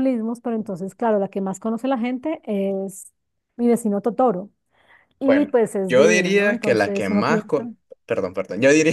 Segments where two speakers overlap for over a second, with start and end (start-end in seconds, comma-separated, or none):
5.2-7.6